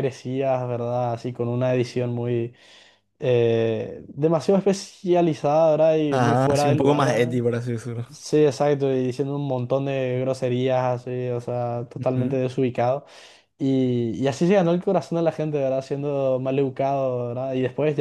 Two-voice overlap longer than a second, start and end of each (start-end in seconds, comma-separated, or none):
6.1-7.4